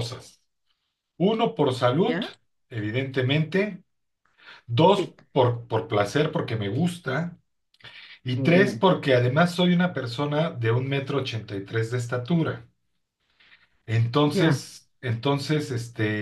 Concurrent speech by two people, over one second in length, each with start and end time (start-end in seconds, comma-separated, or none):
none